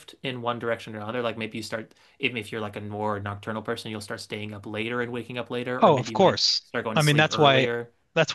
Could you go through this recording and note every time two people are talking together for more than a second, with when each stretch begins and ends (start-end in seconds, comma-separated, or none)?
5.8-7.7